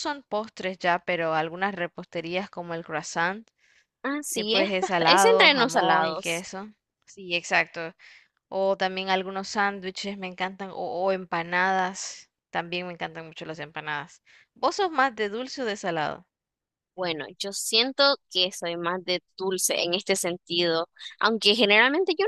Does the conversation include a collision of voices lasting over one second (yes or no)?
yes